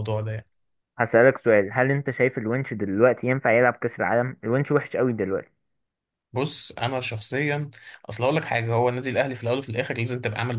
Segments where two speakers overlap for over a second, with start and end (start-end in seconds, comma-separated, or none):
none